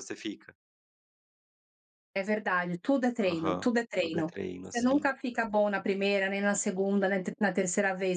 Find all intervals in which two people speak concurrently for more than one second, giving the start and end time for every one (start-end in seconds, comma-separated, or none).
3.2-5.1